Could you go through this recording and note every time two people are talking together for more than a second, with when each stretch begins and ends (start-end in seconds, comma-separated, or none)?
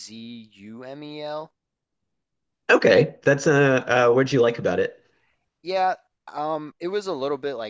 none